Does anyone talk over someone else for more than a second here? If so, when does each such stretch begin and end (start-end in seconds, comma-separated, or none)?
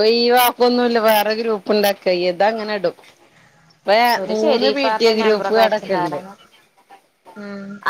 4.3-6.2